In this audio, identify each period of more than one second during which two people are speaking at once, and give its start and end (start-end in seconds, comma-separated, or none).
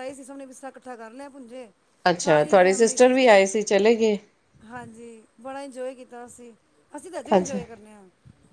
none